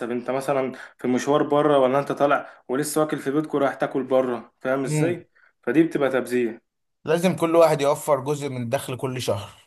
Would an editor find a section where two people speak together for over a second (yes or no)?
no